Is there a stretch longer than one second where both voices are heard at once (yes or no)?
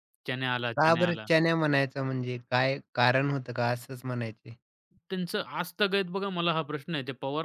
no